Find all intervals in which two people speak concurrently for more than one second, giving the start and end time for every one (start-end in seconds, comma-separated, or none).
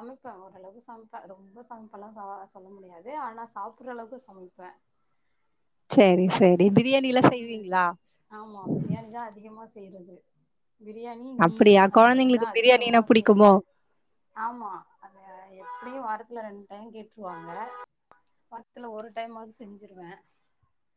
11.4-13.5